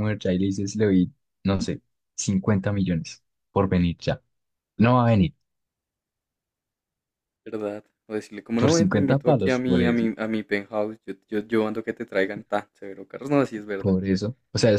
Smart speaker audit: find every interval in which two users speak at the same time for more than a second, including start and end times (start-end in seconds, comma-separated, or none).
8.5-10.1